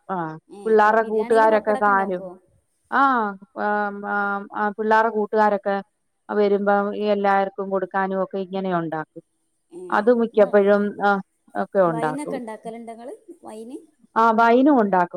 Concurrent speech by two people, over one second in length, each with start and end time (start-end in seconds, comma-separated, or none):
0.6-2.2